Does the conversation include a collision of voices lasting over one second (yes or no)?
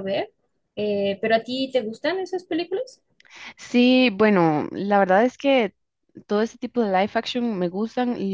no